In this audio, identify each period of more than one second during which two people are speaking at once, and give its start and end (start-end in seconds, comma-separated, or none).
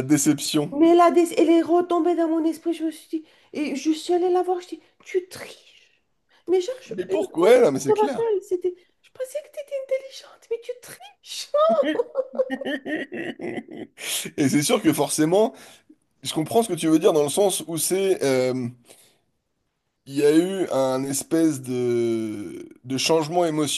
6.9-8.3